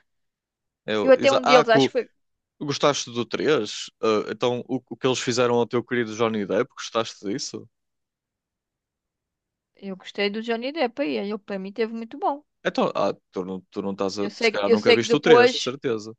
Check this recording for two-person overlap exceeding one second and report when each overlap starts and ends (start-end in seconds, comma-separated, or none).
14.2-15.7